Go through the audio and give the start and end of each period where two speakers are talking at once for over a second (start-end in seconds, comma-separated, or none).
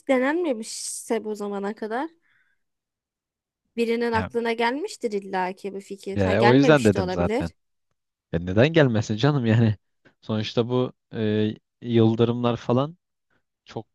6.2-7.5